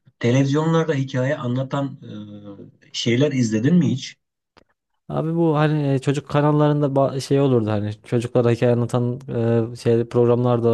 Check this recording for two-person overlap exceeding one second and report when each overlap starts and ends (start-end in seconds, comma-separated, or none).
none